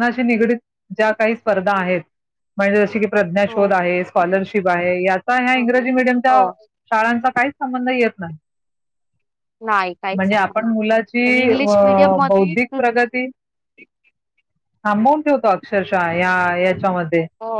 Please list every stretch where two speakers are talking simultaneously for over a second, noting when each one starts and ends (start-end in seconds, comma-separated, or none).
10.2-12.5